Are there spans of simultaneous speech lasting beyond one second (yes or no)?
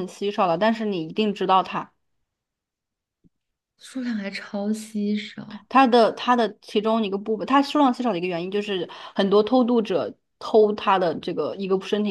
no